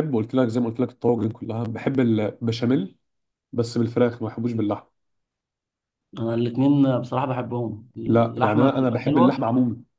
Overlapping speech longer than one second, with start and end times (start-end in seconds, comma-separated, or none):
8.1-9.4